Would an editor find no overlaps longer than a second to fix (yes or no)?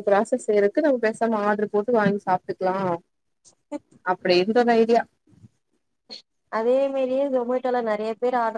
yes